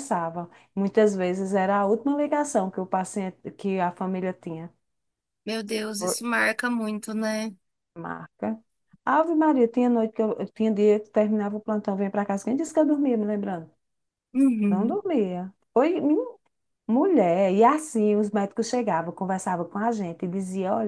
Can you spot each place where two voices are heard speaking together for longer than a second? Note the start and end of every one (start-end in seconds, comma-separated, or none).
none